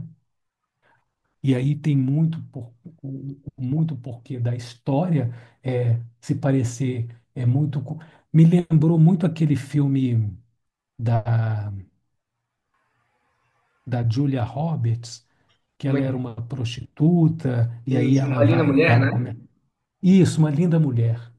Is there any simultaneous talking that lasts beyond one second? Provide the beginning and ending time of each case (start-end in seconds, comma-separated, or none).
17.9-19.4